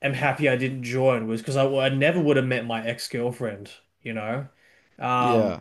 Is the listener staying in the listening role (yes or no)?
yes